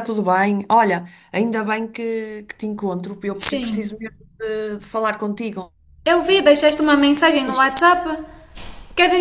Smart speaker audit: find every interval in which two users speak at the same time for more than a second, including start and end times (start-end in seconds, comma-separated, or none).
none